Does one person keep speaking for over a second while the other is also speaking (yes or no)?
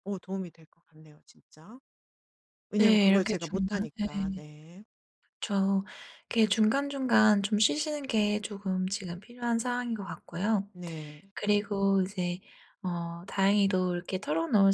yes